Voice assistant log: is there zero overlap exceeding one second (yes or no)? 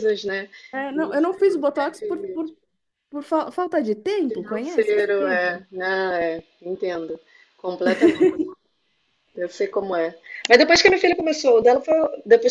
no